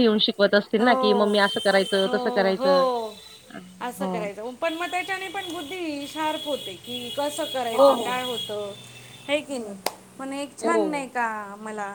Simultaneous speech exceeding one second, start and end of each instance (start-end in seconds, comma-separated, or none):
0.8-2.6